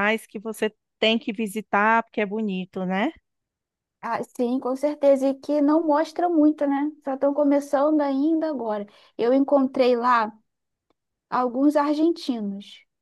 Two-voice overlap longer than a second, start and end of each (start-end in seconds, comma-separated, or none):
none